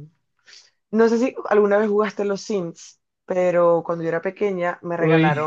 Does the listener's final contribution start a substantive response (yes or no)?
no